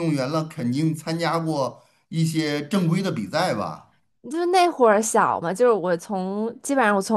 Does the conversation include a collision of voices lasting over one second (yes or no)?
no